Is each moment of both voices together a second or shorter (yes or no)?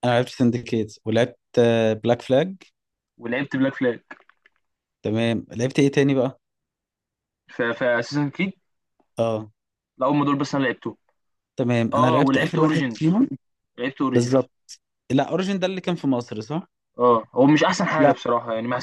no